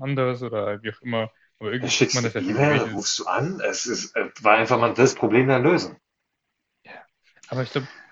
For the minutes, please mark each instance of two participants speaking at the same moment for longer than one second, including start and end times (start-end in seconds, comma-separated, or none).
1.8-3.0